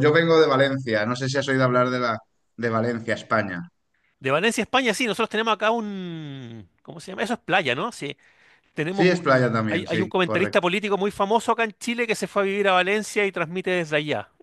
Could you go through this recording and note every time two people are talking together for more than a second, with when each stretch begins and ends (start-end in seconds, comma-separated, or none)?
8.9-10.7